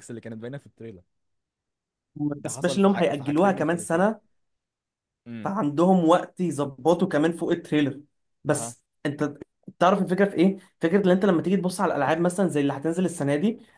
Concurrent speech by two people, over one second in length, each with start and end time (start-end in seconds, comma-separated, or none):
2.4-4.1